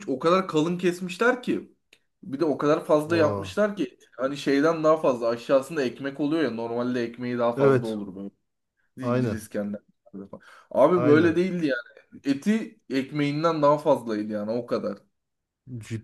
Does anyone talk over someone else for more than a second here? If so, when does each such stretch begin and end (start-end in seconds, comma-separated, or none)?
none